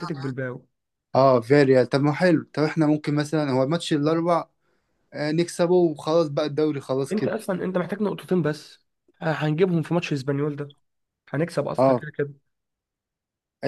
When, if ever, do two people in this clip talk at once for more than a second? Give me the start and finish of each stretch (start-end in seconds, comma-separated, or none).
none